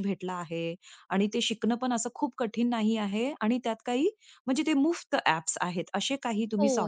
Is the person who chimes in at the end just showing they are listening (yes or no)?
no